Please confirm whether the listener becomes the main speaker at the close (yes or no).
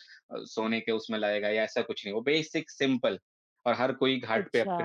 yes